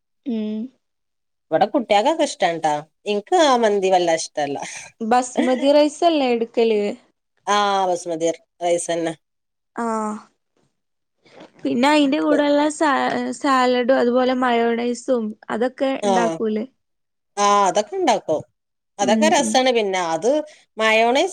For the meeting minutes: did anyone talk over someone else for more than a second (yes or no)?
no